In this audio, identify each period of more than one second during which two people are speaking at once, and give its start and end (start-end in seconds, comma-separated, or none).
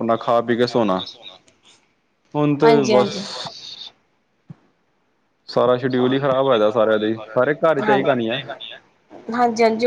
none